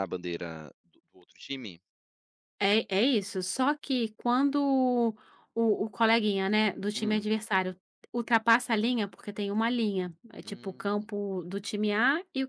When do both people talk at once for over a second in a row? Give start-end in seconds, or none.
none